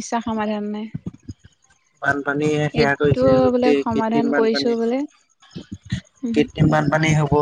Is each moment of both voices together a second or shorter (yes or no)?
no